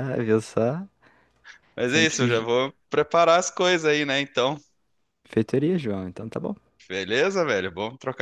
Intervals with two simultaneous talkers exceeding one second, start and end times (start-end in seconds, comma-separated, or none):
none